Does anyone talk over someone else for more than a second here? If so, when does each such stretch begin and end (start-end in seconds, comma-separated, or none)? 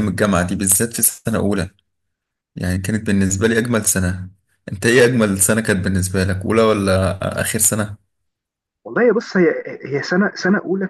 none